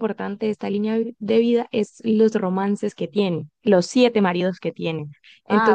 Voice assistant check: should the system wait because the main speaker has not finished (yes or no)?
yes